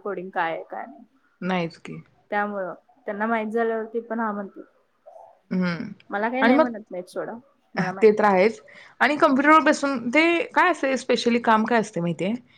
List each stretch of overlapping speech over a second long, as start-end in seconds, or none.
none